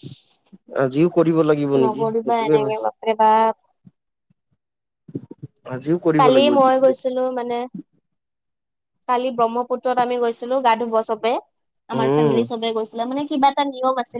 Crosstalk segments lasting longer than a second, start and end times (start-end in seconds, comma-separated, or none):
1.8-3.5